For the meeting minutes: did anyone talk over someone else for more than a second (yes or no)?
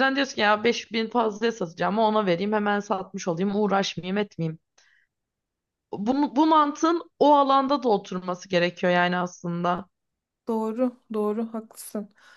no